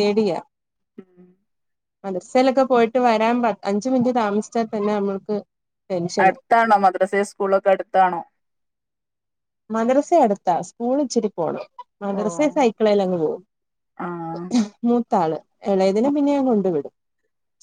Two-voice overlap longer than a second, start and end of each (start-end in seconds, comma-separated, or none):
none